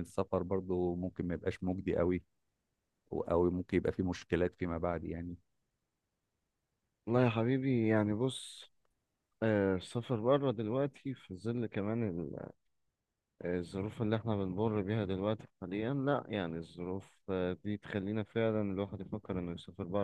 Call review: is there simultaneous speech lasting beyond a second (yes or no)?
no